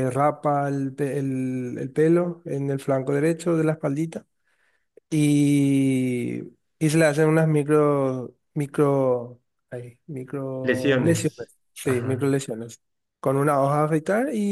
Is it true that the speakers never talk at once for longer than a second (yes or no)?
no